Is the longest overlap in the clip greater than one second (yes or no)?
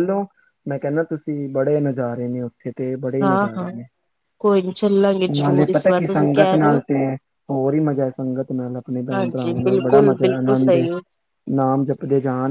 yes